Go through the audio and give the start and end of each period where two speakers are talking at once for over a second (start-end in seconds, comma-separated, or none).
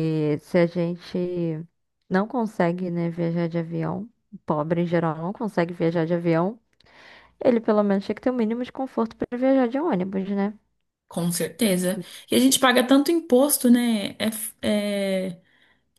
none